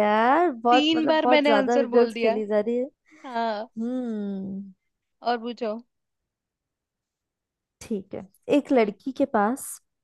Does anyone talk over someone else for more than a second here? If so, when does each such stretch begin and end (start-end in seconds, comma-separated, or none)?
0.7-2.3